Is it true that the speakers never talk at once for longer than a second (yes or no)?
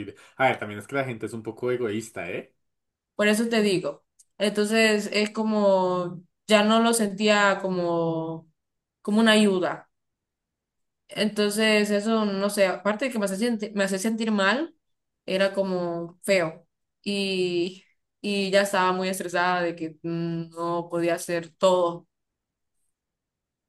yes